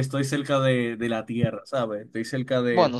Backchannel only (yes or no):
yes